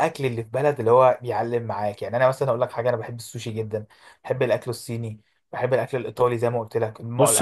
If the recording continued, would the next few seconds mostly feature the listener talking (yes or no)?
yes